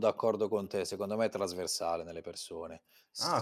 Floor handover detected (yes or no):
yes